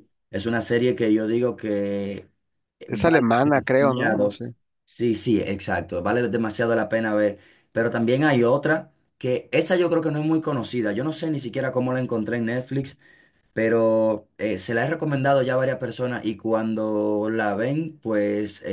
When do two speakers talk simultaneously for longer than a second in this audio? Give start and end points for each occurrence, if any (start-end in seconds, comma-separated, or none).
2.9-4.4